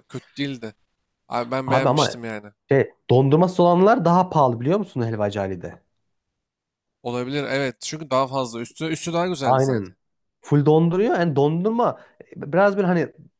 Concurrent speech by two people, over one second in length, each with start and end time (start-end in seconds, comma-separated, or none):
none